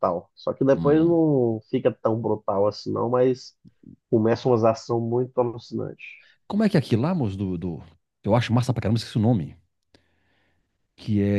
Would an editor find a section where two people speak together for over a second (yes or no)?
no